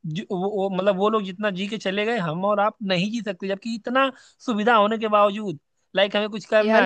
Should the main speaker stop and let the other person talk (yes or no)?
no